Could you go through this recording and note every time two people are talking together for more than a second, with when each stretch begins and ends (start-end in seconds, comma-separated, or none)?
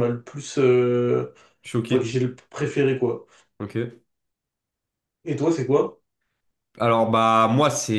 none